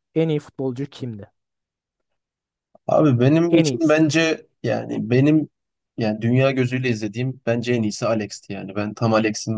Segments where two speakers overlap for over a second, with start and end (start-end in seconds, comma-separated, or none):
none